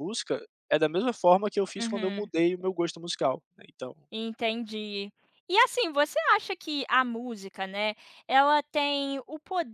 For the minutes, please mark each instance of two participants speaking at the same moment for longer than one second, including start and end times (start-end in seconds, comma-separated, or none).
none